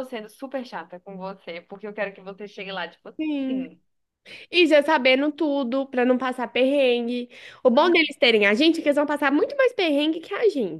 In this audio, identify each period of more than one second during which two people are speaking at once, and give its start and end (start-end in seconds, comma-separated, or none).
none